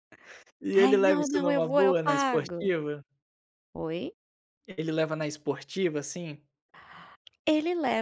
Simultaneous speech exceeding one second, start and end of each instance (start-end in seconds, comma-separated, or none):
0.8-2.7